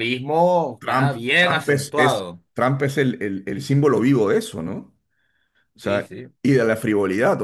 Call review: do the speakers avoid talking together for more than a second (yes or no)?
no